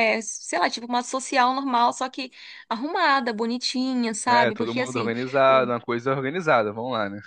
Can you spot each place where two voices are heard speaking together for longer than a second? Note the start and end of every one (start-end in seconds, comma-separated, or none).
4.3-5.7